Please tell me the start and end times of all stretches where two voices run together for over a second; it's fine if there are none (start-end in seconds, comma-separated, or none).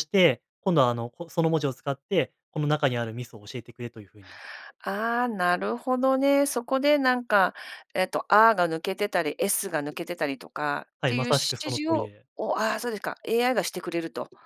11.0-12.2